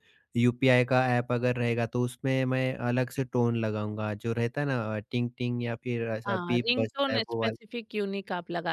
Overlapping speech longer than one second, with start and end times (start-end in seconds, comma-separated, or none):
6.3-7.7